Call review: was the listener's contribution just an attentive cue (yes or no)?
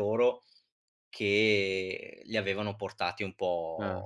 no